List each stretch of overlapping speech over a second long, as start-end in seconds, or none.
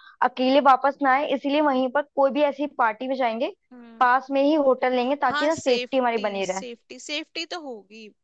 5.3-6.6